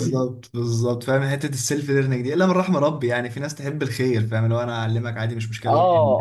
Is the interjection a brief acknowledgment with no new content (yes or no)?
no